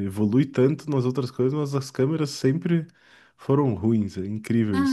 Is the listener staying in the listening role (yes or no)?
no